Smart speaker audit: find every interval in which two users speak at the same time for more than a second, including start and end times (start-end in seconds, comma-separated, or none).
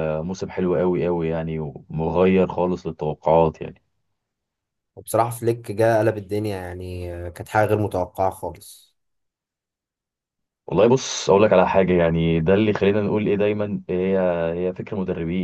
none